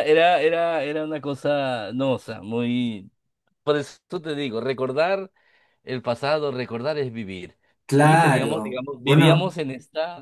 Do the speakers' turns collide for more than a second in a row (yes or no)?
yes